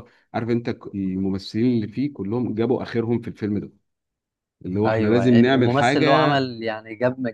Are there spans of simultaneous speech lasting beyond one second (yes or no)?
yes